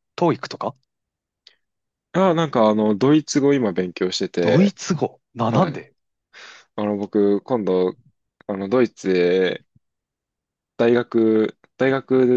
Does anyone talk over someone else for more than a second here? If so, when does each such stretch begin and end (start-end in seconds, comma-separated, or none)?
none